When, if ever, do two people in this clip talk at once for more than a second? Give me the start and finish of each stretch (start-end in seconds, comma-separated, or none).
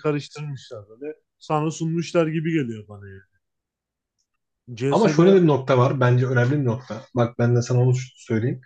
none